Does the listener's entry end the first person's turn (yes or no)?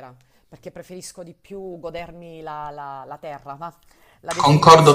yes